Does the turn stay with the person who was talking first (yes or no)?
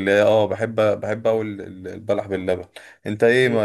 yes